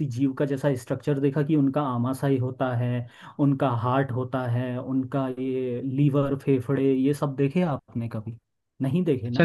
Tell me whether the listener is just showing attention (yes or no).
no